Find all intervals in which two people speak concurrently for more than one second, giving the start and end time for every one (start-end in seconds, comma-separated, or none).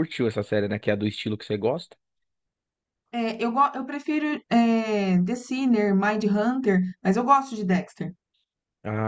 none